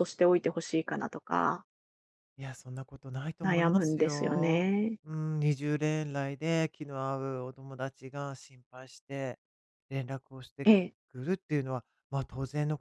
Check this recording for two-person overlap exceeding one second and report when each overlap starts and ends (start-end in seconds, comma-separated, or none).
3.4-5.0